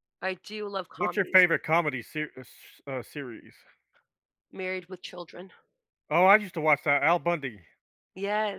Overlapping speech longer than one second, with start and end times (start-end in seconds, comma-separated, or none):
none